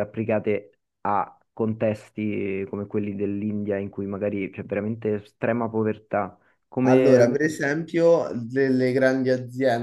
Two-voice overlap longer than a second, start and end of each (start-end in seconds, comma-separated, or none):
none